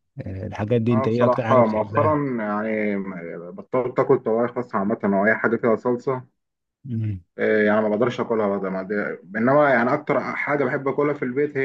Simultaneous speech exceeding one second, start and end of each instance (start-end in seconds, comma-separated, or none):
0.9-2.2